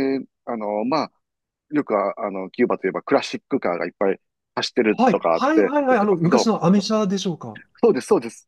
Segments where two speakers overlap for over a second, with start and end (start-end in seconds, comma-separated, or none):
4.9-6.5